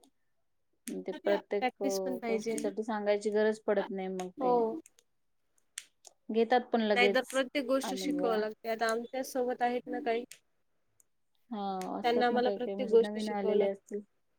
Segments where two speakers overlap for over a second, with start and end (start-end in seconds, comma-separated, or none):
12.0-13.8